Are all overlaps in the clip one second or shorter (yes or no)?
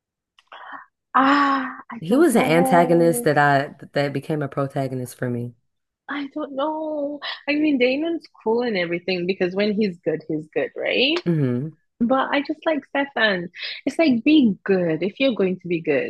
no